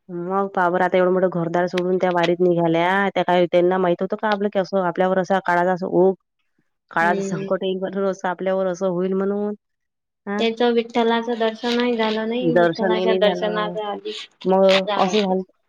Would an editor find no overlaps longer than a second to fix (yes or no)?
no